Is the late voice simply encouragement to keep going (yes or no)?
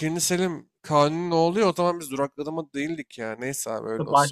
no